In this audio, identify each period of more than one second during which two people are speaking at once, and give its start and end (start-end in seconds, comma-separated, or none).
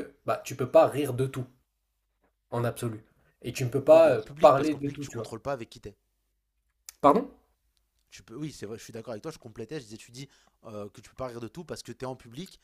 3.9-5.3